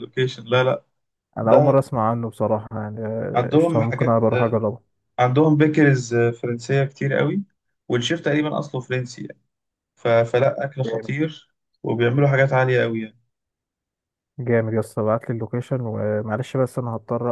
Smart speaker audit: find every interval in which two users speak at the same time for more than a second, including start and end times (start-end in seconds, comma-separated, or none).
3.4-4.6